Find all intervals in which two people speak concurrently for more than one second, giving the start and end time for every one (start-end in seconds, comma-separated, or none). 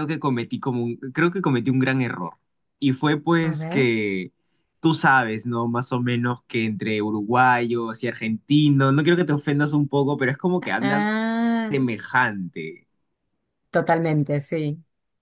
none